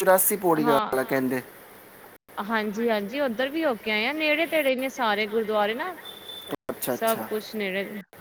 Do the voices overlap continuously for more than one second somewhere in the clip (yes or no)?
no